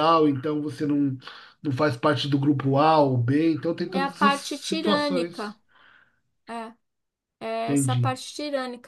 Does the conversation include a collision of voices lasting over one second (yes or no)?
yes